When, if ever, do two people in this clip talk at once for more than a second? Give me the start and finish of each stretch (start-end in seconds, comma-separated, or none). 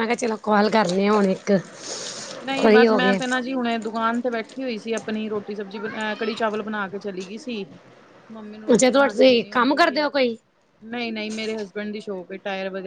none